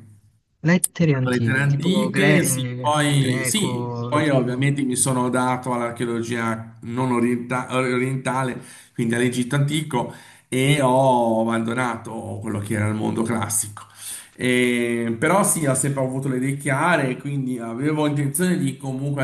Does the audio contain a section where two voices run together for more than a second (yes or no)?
yes